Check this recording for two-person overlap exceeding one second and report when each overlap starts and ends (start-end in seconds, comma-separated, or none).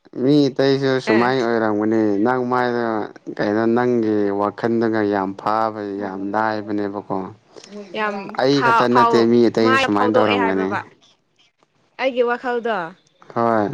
8.4-10.7